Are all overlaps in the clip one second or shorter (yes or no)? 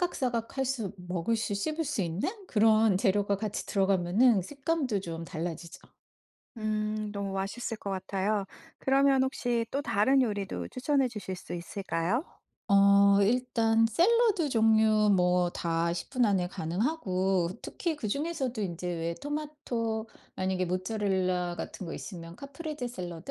yes